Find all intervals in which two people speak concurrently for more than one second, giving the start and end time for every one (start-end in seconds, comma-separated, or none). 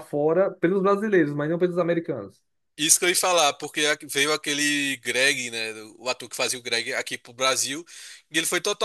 none